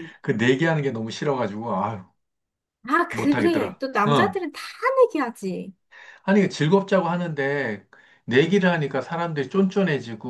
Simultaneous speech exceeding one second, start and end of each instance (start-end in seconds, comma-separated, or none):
3.1-4.4